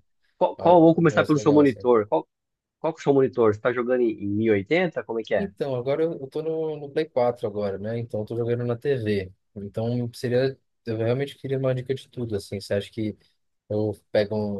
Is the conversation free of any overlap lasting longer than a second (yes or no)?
no